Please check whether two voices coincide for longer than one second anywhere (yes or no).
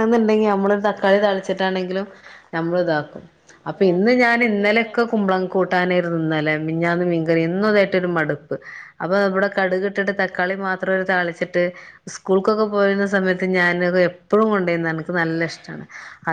yes